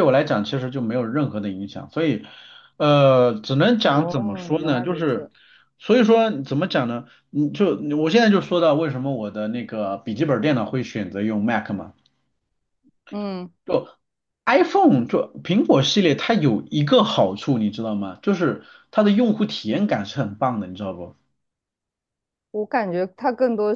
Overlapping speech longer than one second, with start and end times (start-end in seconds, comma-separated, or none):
3.8-5.3